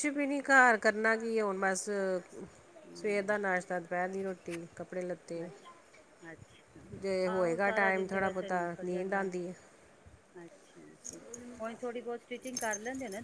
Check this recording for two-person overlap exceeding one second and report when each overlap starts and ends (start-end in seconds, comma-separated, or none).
7.3-9.2